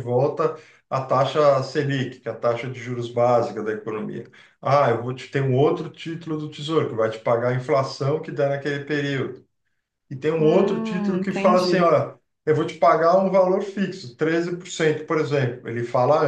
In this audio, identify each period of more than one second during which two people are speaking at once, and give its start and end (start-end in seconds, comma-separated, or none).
10.4-11.9